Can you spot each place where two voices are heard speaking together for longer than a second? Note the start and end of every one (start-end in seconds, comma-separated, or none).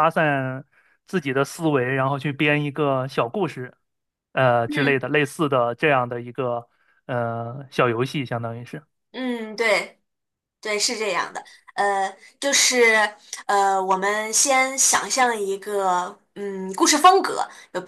none